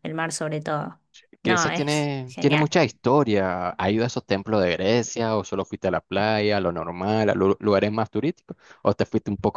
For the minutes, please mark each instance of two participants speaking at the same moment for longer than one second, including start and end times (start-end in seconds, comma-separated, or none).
1.4-2.7